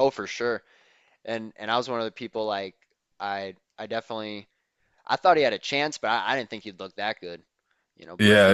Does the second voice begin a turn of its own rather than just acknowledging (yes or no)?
yes